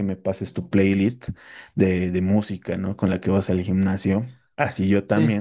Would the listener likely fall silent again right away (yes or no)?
yes